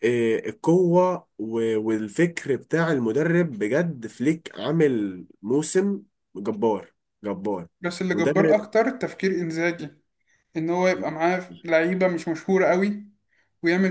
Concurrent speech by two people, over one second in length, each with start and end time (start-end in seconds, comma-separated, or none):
none